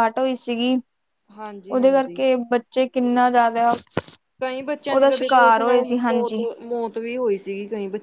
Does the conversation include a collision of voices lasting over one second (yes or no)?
yes